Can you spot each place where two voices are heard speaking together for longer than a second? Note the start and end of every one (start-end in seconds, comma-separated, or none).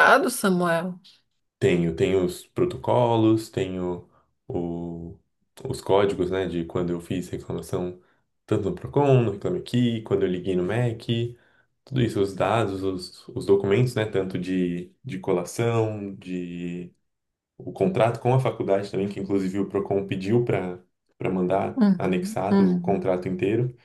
21.8-23.0